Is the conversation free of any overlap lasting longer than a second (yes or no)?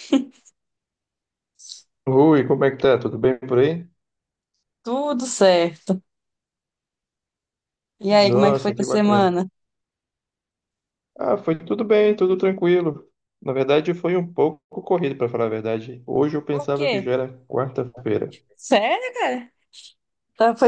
no